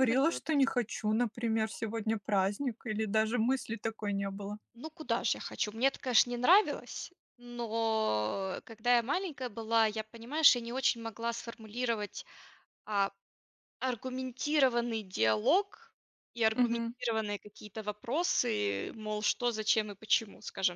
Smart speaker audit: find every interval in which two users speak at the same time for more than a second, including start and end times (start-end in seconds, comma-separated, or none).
none